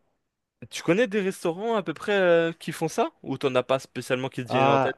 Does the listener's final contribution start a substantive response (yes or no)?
yes